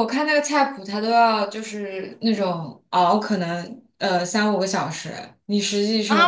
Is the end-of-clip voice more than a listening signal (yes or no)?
yes